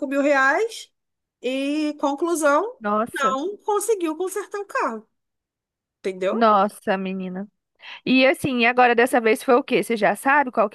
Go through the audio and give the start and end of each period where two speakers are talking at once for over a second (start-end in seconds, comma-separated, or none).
none